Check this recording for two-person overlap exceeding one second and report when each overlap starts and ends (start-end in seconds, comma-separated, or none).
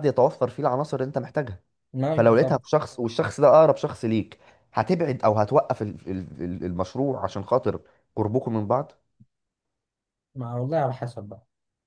none